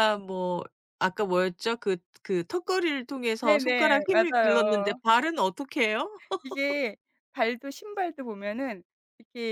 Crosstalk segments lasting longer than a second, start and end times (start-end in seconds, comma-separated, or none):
3.4-5.0